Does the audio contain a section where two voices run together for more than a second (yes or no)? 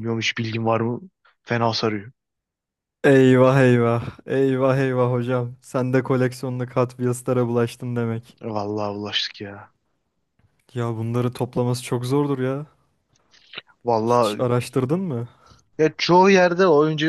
no